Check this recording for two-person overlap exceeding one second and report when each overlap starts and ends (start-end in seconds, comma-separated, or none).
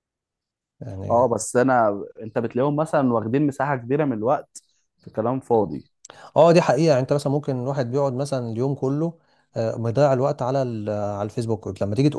none